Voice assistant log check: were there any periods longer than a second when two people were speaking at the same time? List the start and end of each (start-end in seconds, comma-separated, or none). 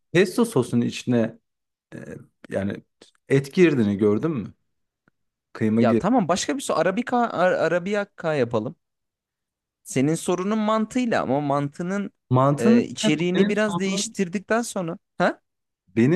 12.6-14.2